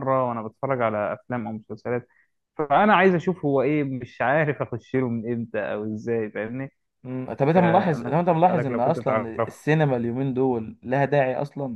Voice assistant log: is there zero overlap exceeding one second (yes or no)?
no